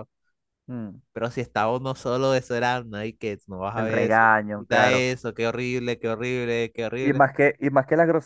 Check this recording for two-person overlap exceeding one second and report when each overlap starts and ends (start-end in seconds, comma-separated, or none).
3.7-5.0